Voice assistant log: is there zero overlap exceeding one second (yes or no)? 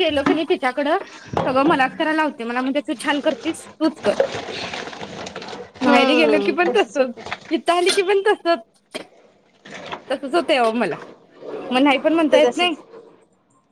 no